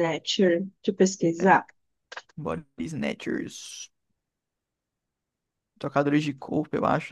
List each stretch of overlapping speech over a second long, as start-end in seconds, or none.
none